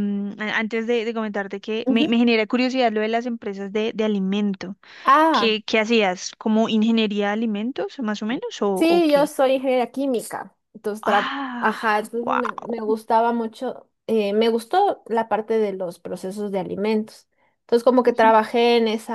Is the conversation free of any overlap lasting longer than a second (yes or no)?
no